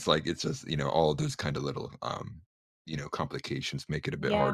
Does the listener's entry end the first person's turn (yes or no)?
yes